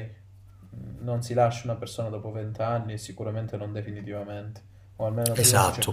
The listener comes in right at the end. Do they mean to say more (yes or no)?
yes